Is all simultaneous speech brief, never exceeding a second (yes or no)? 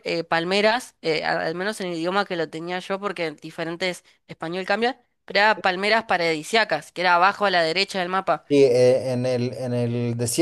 yes